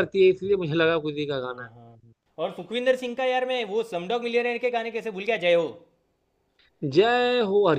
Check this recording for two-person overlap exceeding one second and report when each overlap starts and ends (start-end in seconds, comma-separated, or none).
none